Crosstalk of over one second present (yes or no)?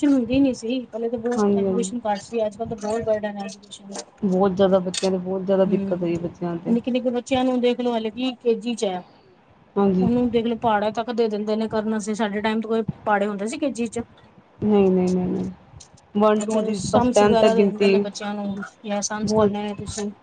yes